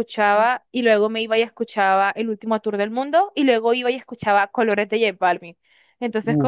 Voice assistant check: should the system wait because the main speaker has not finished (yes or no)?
yes